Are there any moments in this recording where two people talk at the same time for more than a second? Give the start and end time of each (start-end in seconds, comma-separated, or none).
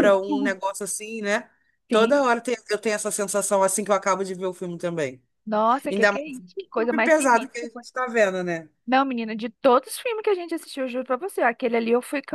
5.9-7.7